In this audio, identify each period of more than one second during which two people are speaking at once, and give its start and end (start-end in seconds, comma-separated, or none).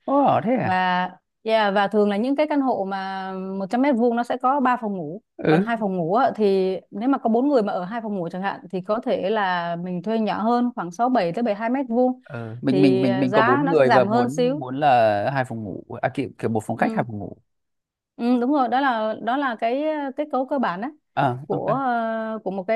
12.7-14.6